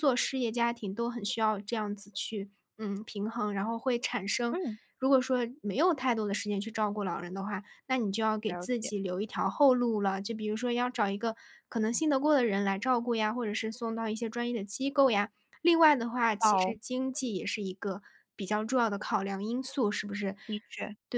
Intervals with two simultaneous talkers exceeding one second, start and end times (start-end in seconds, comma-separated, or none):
none